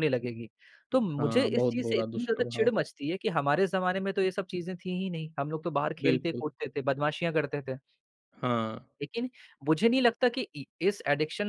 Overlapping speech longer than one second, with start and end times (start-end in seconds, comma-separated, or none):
1.2-2.7